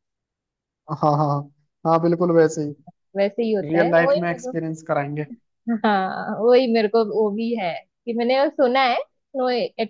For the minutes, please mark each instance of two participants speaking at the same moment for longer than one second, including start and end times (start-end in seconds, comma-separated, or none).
none